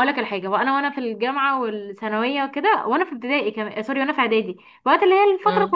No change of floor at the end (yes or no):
yes